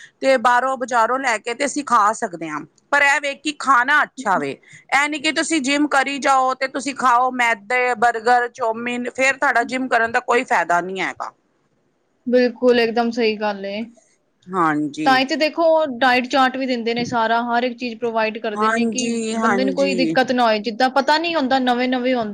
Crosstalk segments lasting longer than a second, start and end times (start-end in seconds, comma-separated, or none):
18.6-20.2